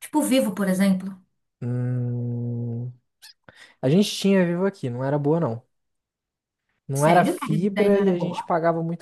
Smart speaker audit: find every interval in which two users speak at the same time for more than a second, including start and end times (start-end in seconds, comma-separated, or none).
6.9-8.4